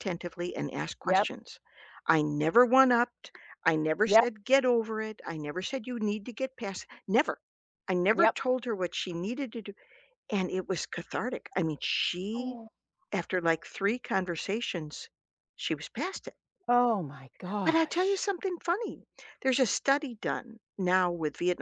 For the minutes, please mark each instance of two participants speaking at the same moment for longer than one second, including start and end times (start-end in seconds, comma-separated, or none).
none